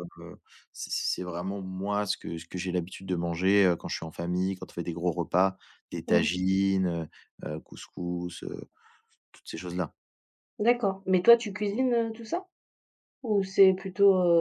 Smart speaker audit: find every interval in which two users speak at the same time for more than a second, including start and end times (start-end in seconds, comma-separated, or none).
none